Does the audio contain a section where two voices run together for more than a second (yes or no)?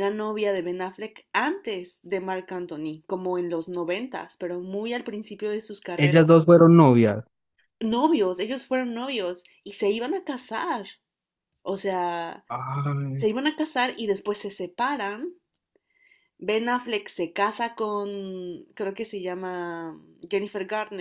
no